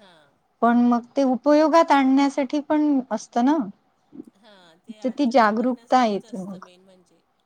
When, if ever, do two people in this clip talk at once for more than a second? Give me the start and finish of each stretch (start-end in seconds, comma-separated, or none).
5.0-6.6